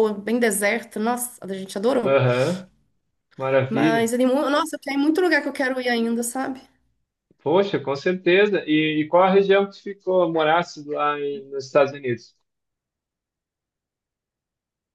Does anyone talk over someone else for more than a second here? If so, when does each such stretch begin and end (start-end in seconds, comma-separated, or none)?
none